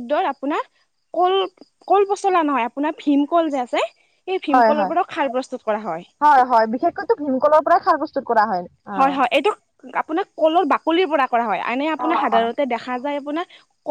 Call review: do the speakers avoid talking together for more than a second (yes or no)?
yes